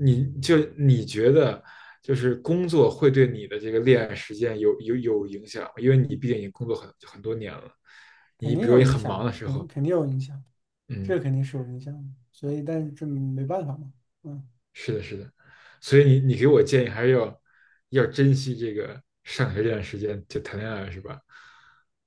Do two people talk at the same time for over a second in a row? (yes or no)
yes